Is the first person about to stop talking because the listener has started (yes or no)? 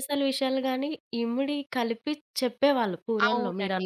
yes